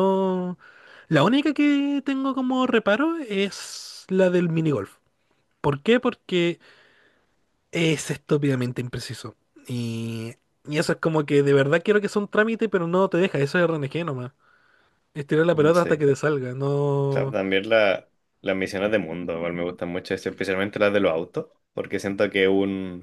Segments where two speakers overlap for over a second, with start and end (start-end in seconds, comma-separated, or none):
none